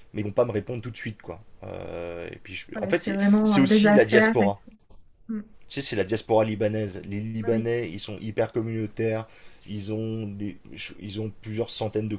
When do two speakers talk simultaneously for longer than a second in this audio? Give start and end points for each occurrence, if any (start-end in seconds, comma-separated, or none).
2.7-4.6